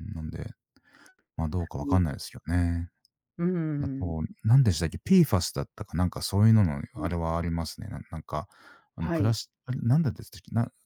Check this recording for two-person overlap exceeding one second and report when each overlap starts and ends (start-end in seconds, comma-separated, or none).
none